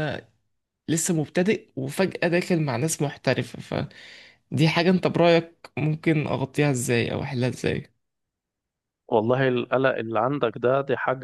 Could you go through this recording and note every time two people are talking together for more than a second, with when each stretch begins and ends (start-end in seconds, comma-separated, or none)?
none